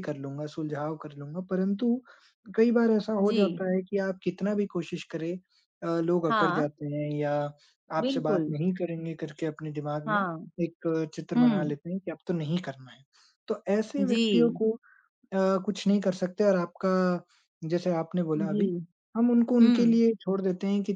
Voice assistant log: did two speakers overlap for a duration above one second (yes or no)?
no